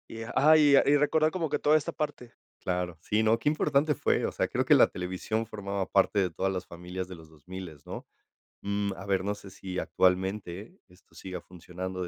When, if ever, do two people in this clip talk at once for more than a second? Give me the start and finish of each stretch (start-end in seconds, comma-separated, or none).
none